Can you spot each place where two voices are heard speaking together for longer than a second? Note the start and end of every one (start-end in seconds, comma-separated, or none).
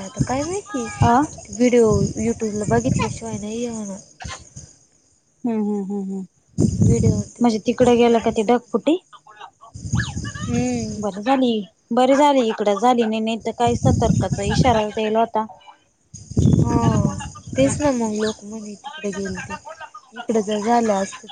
7.4-8.9